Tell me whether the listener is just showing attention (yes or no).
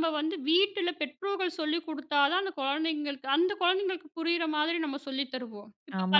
no